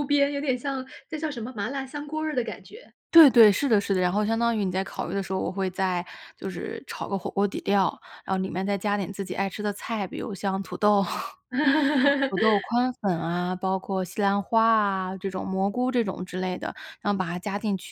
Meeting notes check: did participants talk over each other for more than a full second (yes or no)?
no